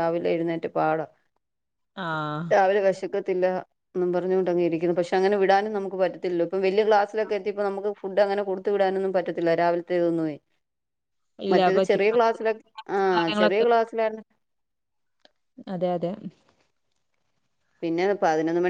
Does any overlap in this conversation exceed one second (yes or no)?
no